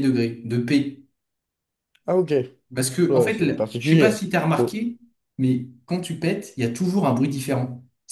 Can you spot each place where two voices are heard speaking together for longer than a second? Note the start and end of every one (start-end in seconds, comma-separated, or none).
3.1-4.8